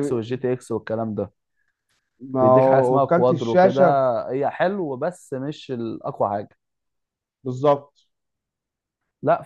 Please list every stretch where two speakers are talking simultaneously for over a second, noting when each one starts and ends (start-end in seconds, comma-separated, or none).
2.4-3.8